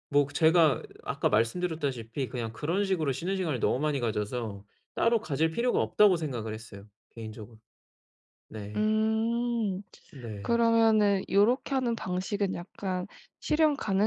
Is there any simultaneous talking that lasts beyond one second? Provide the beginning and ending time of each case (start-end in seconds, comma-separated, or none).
none